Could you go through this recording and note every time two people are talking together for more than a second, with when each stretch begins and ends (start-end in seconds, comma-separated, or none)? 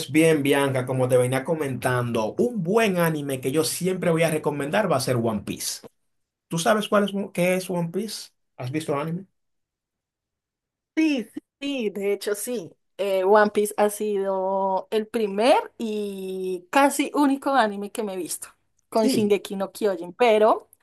none